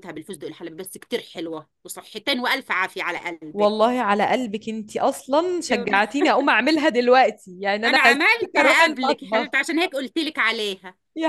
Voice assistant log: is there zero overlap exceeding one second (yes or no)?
no